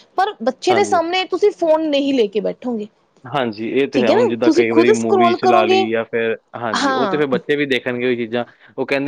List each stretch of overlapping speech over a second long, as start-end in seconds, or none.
3.9-5.8